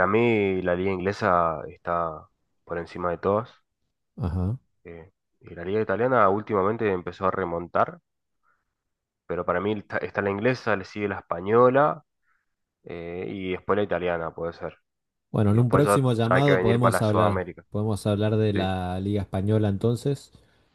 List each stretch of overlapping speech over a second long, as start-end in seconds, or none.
15.5-17.6